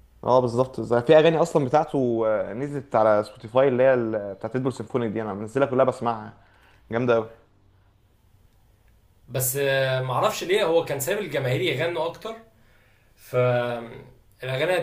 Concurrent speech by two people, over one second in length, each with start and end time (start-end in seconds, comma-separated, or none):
none